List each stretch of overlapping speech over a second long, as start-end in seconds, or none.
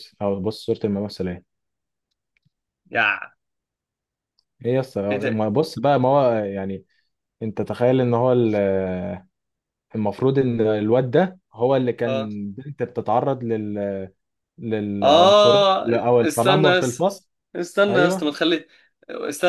15.0-17.1